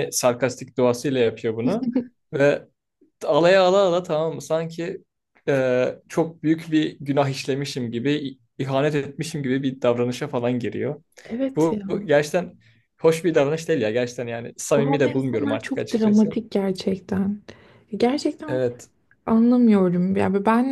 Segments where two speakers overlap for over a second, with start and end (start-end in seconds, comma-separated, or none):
14.8-16.4